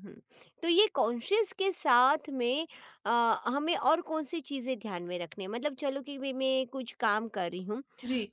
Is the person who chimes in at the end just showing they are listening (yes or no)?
yes